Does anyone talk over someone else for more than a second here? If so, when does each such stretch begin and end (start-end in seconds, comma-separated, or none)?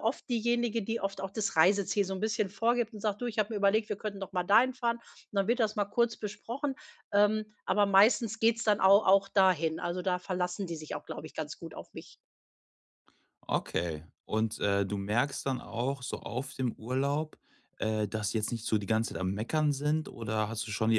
none